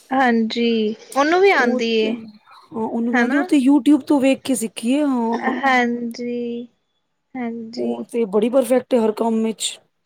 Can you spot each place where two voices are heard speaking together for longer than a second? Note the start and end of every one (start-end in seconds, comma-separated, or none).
none